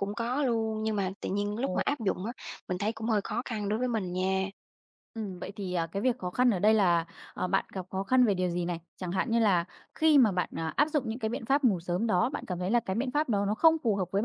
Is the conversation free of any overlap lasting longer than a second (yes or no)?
yes